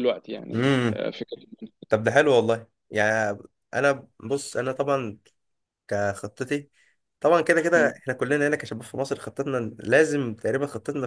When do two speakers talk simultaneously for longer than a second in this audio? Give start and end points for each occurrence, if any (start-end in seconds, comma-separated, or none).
none